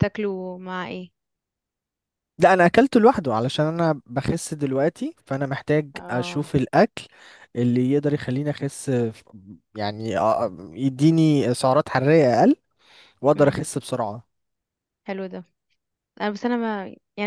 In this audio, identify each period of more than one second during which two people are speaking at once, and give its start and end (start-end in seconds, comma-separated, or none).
none